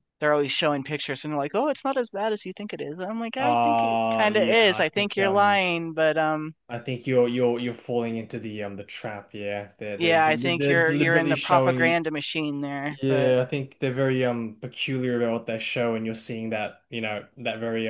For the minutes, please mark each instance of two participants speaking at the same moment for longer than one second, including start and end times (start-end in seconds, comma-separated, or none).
3.4-5.6, 10.0-12.0